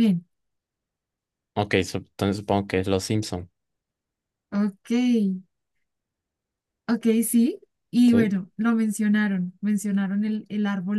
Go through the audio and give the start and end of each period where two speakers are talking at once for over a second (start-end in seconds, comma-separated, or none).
none